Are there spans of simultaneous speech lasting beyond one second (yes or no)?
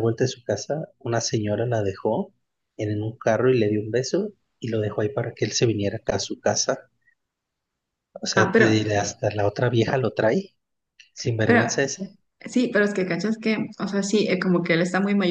no